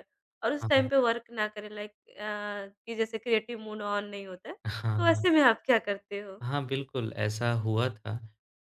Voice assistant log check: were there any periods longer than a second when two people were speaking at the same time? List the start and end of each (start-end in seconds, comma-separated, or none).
none